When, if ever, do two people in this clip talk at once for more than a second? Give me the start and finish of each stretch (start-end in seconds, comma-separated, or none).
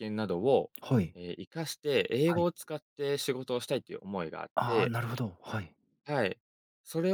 none